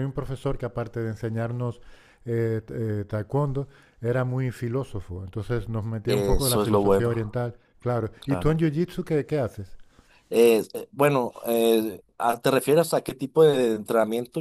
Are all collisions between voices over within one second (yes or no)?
no